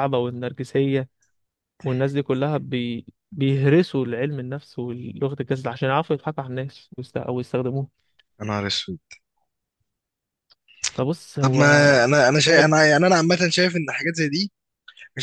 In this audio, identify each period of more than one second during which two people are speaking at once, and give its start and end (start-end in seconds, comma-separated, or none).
none